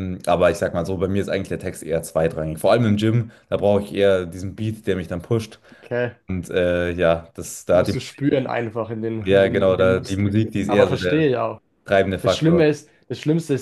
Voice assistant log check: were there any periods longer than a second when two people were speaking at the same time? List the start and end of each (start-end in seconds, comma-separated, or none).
9.2-11.3